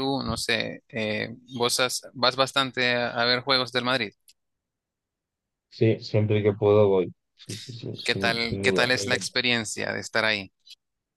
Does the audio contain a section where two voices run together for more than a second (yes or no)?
yes